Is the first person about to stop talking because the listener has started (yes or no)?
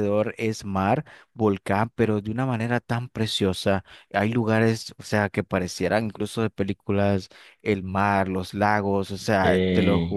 no